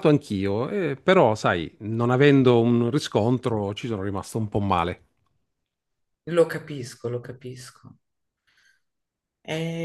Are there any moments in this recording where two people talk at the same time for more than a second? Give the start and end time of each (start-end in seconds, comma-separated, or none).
none